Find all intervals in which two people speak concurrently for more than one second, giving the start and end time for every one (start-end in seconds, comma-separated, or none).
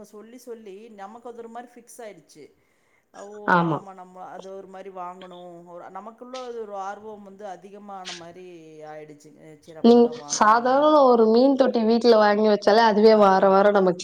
none